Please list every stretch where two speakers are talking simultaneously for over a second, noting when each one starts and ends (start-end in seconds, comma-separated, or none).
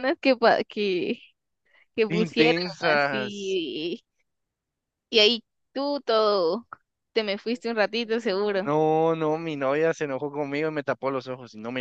2.2-3.6